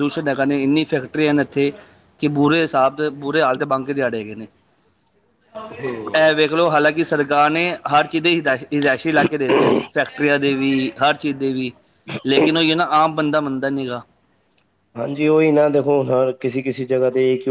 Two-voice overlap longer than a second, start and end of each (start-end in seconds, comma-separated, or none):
none